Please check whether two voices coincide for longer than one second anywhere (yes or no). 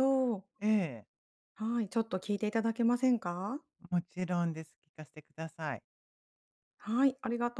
no